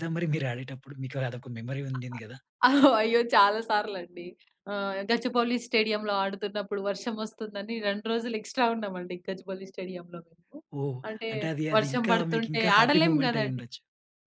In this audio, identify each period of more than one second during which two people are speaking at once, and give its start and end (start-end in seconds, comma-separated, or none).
11.8-13.6